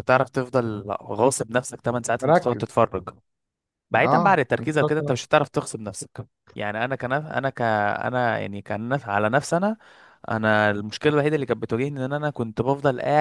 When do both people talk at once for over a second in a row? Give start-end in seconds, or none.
4.0-5.4